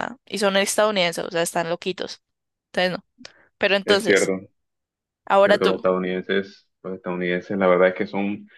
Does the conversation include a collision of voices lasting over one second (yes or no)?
no